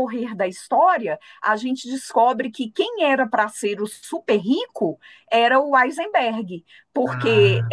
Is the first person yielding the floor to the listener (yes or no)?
no